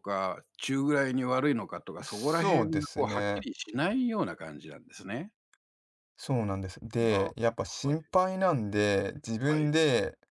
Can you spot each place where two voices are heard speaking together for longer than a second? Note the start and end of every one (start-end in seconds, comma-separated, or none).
2.0-3.5